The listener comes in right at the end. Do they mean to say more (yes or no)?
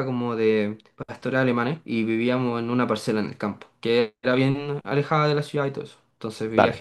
no